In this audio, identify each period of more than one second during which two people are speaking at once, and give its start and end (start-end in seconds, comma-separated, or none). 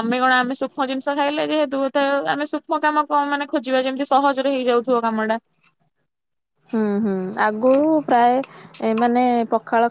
none